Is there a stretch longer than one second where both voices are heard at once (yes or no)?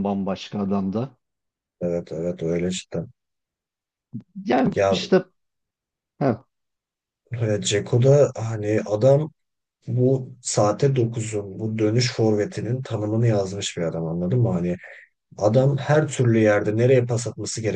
no